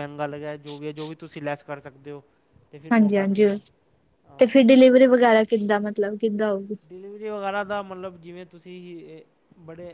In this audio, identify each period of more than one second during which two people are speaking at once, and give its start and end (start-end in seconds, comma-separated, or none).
none